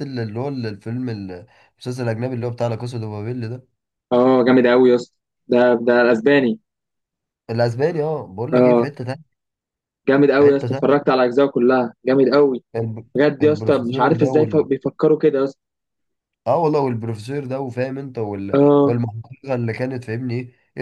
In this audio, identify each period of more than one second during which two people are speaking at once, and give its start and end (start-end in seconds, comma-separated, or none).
13.1-14.7